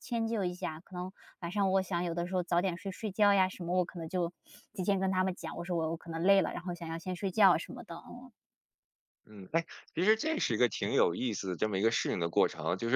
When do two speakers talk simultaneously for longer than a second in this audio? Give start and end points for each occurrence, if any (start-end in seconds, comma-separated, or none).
none